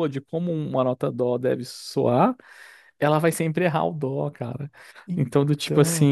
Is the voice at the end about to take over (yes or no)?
no